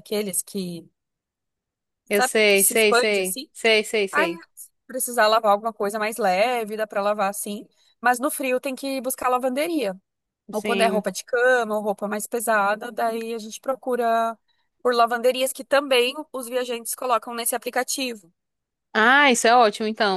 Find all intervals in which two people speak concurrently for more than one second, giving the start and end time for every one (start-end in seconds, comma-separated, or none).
2.1-3.5